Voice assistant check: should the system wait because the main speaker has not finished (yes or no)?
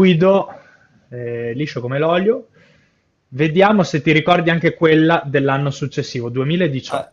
no